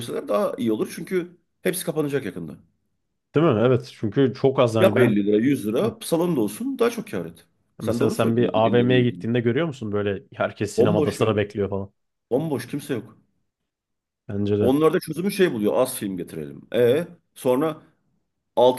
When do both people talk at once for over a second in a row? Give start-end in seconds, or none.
7.8-9.2